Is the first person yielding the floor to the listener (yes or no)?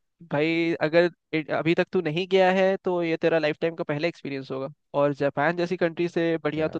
no